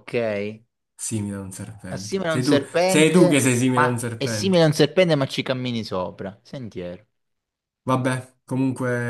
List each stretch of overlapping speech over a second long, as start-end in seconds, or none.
1.9-4.6